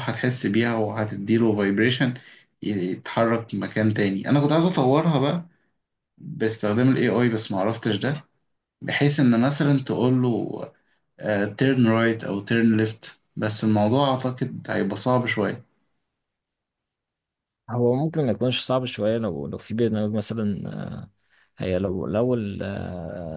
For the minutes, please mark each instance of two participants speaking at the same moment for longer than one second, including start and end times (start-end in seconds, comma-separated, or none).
none